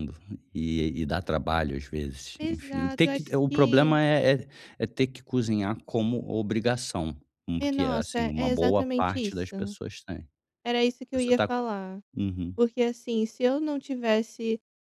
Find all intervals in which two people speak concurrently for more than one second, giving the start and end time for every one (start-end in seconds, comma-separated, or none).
2.4-4.0, 7.6-9.8